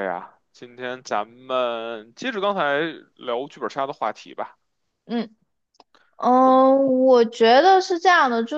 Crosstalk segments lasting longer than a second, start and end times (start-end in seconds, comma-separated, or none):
none